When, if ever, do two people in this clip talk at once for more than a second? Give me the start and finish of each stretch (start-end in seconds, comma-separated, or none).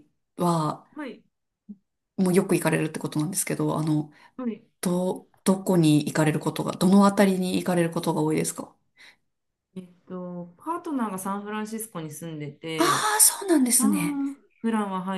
none